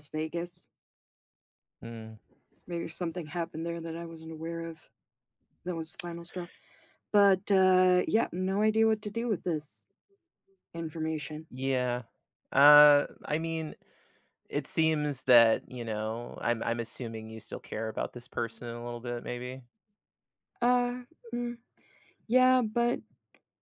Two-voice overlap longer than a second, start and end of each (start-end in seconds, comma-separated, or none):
none